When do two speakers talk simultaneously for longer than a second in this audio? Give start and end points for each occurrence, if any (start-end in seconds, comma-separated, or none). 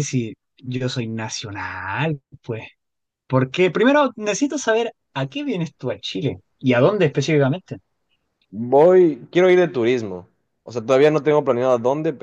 none